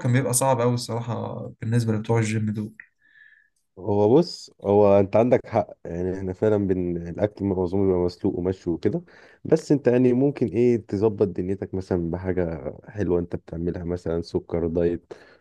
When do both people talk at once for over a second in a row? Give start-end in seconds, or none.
none